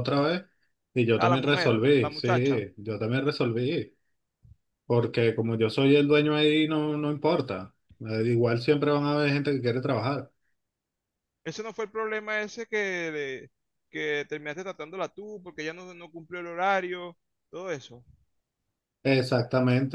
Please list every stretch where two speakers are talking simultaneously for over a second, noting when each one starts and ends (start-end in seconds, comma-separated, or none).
1.2-2.6